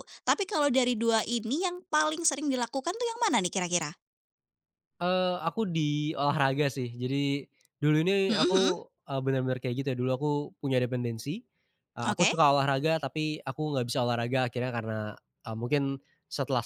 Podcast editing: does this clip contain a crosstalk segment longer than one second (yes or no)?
no